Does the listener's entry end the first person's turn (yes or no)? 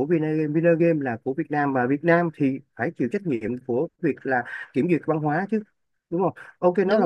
no